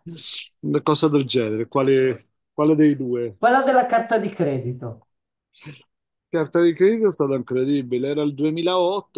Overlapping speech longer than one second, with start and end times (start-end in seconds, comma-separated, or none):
none